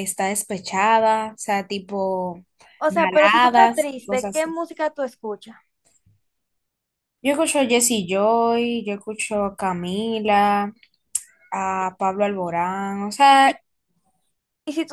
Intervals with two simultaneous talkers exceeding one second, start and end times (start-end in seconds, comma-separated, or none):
2.9-4.6